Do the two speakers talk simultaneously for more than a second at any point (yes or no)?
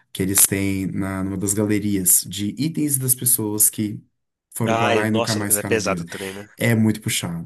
yes